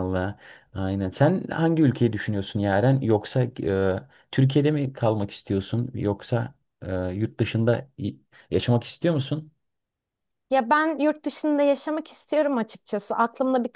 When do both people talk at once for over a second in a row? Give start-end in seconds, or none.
none